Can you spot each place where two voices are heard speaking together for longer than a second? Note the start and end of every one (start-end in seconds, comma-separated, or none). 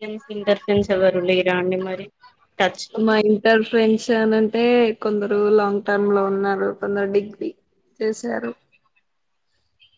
none